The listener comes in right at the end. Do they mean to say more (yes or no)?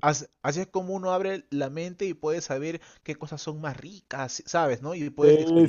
yes